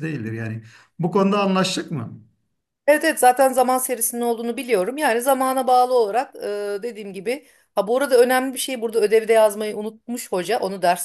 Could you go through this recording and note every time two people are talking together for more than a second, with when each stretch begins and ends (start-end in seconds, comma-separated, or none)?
none